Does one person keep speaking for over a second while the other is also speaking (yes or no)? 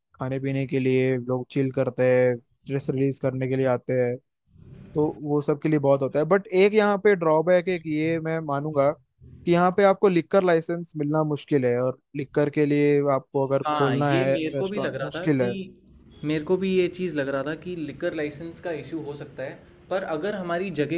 yes